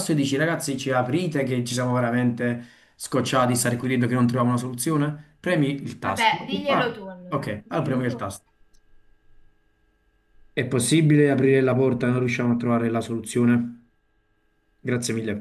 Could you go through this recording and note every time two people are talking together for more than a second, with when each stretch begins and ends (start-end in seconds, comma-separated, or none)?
6.0-8.3